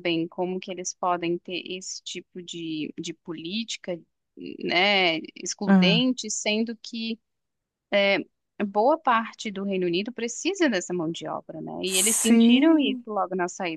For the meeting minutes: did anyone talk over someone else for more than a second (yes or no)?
yes